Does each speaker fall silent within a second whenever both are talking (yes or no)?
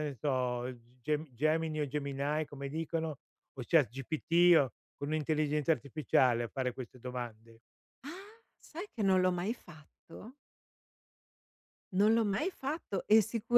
yes